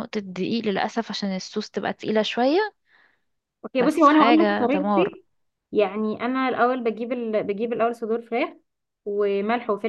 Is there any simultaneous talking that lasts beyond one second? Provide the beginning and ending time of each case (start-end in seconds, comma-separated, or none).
3.8-5.2